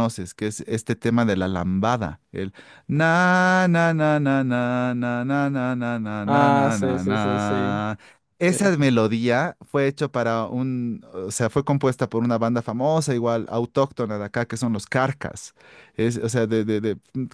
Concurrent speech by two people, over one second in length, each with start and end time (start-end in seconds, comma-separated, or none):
6.2-7.8